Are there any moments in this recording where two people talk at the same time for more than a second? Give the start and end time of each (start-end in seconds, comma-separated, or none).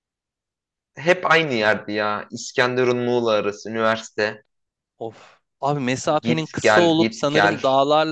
6.2-7.6